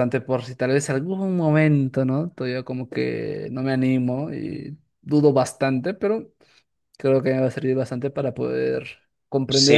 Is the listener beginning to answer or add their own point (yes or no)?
yes